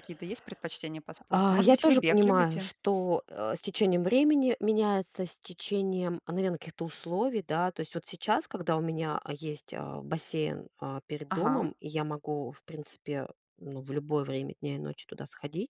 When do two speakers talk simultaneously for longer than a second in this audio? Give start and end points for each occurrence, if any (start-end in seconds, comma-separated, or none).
1.3-2.7